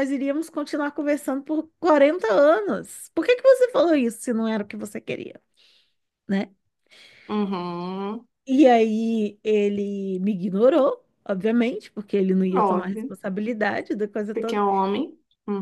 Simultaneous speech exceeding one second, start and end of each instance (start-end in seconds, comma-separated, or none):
none